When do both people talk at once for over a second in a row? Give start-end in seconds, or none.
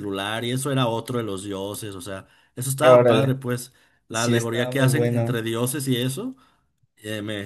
4.1-5.4